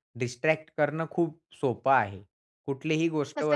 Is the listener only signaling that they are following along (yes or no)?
yes